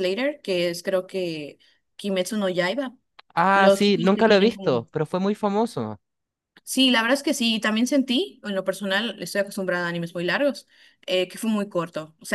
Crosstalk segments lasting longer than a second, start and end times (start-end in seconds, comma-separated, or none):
3.5-4.9